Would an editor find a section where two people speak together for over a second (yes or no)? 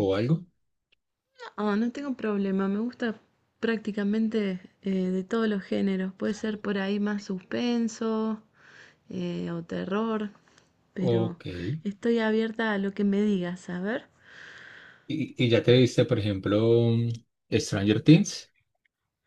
no